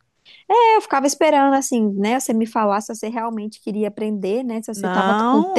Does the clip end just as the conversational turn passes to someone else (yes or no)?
yes